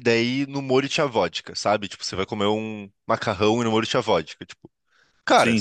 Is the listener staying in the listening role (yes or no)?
yes